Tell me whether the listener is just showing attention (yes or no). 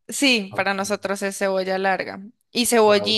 yes